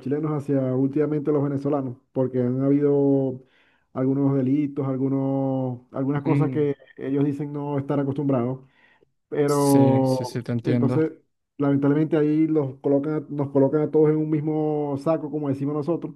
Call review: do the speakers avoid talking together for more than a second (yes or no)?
no